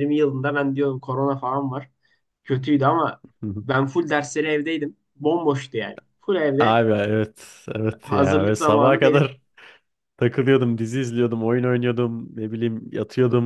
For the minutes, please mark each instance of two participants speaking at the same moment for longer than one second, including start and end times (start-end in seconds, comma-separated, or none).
8.0-9.3